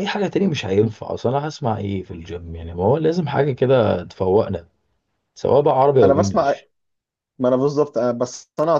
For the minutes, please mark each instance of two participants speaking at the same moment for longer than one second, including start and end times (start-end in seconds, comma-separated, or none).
none